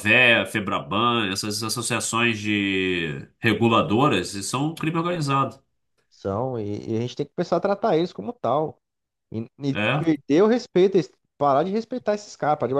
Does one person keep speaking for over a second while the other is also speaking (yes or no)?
no